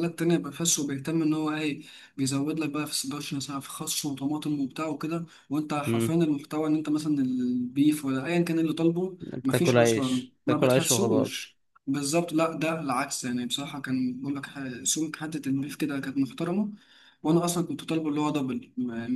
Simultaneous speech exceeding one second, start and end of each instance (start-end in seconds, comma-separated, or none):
9.2-11.4